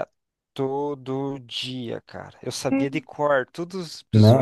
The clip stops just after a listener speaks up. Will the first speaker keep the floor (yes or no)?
no